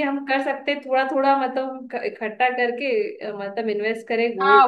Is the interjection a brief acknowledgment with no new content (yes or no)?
no